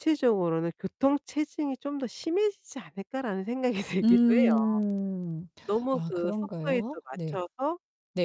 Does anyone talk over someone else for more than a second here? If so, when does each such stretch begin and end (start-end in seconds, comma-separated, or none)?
5.9-7.4